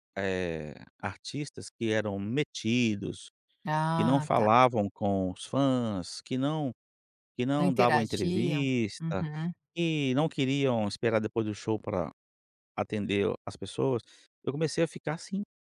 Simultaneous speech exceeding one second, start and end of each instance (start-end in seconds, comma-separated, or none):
7.6-9.2